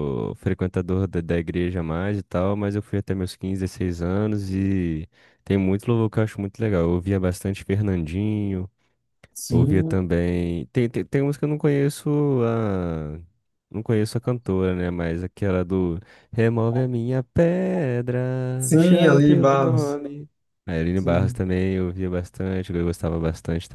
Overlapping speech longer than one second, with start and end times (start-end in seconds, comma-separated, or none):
18.6-20.0